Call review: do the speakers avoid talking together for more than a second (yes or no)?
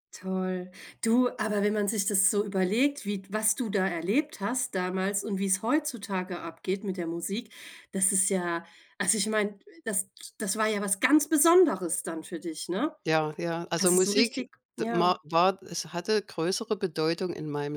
no